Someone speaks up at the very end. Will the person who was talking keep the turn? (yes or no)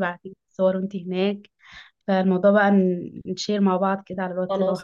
no